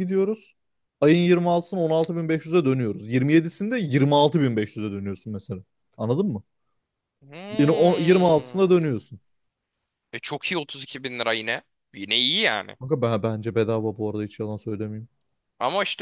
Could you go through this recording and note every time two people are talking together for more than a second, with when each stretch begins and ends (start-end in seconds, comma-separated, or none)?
none